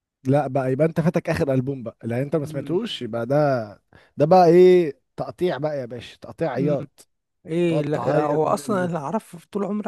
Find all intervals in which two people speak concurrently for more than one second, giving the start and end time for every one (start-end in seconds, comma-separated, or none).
7.7-8.9